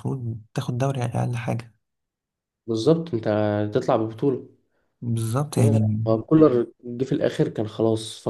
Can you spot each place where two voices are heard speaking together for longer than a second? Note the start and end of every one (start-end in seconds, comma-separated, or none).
none